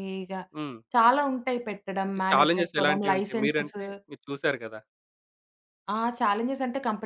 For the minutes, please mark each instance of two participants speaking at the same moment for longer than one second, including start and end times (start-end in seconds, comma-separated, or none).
2.0-3.8